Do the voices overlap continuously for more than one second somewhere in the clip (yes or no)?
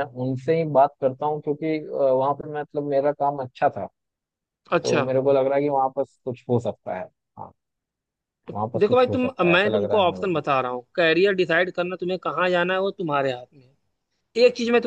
yes